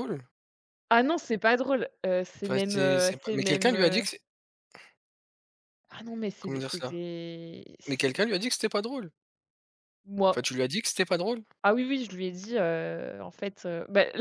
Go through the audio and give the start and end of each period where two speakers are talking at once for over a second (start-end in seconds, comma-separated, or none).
2.4-4.0